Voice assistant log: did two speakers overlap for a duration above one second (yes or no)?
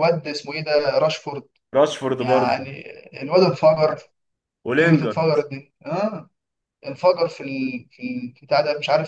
no